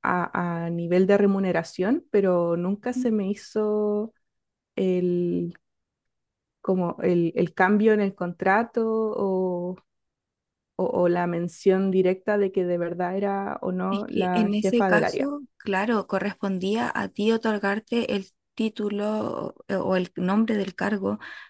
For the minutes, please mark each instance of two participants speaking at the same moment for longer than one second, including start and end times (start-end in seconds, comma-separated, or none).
13.9-15.3